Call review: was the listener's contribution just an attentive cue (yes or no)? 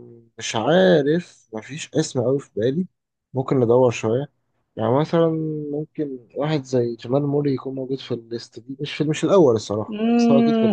no